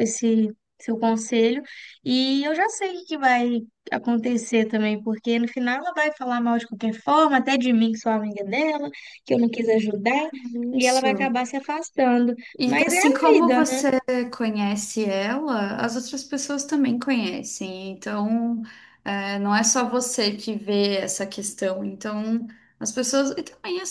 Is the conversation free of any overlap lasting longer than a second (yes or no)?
no